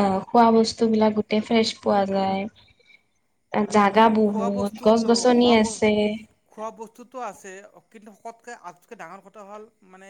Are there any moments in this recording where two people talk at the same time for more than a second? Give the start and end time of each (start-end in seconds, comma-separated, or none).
none